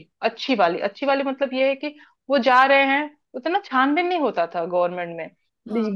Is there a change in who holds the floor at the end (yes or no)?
no